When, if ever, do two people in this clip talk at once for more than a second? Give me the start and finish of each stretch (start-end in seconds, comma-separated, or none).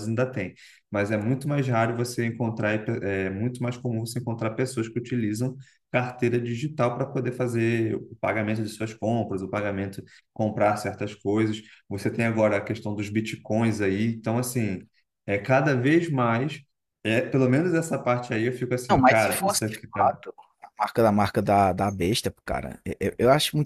18.9-20.2